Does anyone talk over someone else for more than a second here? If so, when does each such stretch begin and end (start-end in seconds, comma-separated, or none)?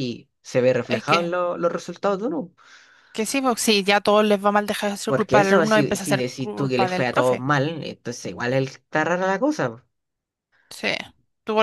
5.1-7.5